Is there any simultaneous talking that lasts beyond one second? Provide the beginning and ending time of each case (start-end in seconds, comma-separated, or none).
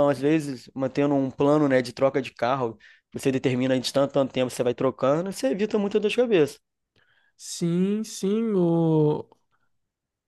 none